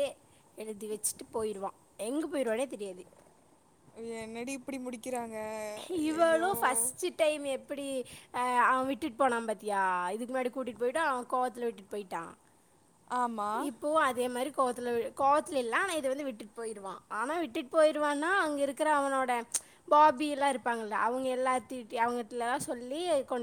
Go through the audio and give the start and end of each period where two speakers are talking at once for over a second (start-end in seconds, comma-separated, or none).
none